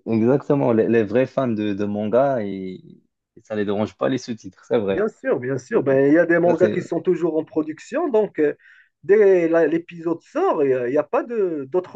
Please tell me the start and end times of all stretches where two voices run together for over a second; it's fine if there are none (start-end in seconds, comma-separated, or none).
none